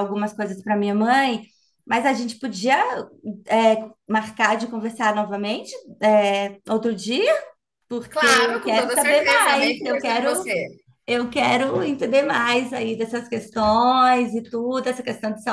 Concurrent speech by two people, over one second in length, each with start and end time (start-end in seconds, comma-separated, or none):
8.1-10.5